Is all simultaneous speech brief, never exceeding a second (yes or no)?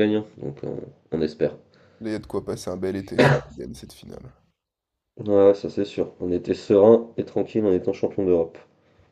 yes